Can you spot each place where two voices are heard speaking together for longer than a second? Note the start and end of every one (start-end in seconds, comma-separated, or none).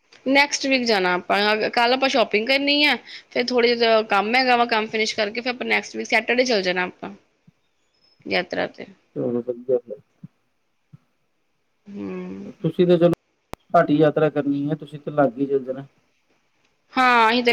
none